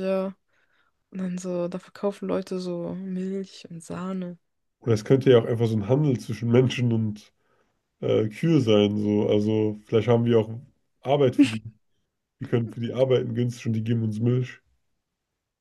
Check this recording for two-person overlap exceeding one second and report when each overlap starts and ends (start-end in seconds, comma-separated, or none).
none